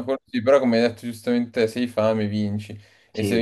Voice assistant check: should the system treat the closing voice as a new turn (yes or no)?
no